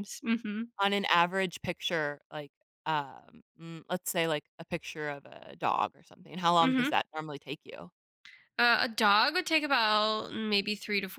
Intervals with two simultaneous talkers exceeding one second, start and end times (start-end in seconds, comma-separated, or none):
none